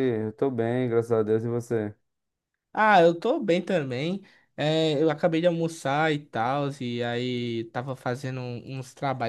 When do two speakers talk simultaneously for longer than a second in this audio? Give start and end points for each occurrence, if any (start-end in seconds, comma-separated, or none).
none